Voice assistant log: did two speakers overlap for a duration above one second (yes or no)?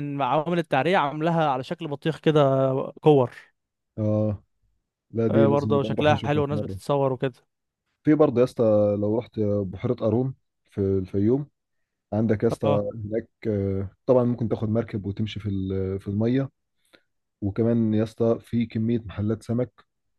yes